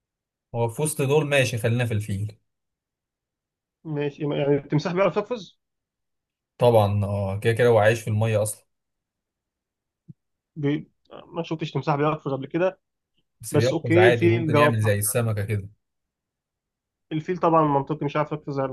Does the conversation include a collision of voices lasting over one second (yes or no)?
yes